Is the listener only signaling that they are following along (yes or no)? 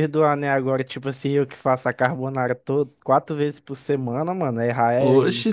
no